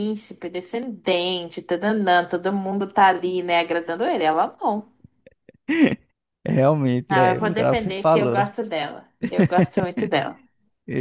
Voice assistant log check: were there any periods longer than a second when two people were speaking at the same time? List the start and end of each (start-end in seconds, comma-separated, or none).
7.1-8.4